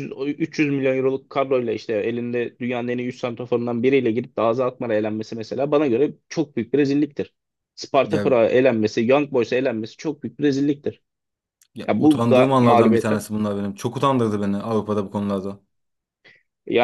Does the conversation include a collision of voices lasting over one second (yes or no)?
yes